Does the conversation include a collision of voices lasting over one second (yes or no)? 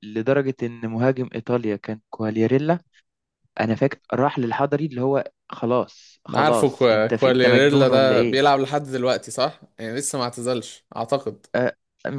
yes